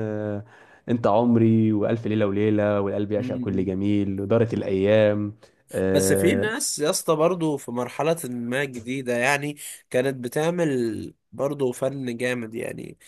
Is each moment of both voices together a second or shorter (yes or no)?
yes